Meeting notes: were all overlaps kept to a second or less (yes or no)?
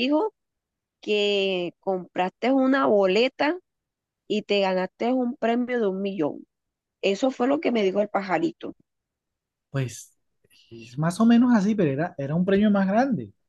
yes